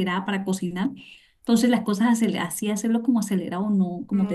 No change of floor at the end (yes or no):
yes